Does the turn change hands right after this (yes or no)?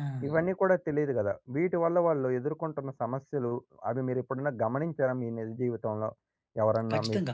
yes